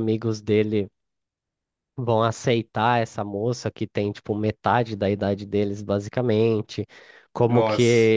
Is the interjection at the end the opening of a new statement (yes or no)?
no